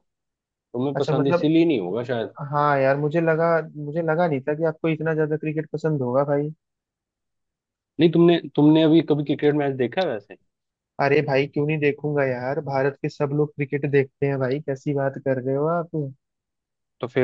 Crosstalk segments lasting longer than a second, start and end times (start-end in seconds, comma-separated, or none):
none